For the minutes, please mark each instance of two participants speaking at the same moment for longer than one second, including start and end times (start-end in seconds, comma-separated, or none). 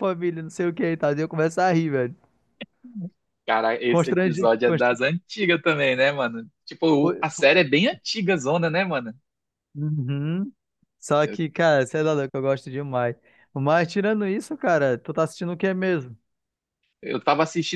3.9-5.1